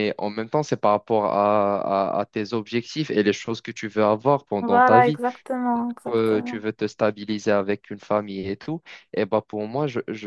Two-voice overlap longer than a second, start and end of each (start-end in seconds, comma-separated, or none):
none